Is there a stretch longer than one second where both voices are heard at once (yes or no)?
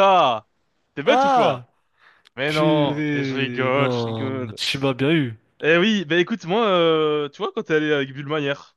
yes